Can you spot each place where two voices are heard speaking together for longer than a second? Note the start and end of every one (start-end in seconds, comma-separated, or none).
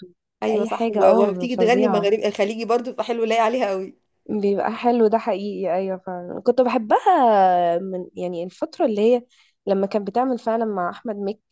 0.5-2.1